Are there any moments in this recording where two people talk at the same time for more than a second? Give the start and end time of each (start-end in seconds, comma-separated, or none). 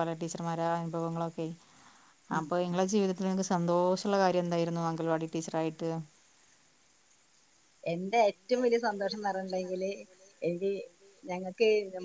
none